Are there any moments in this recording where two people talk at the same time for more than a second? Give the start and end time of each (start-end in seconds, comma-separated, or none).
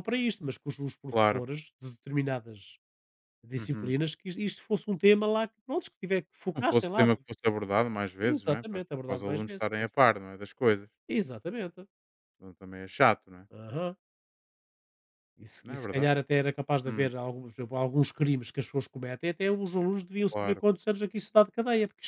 8.3-9.9